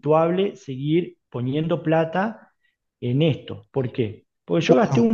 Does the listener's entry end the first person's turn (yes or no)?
no